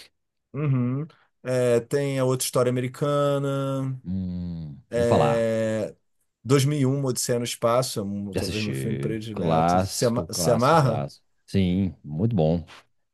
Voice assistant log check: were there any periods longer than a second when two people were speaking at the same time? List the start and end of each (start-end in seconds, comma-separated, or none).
8.3-11.1